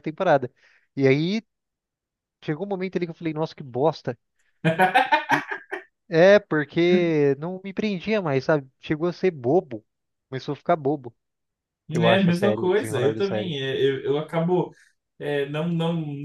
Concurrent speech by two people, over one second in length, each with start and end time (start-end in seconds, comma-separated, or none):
11.9-13.5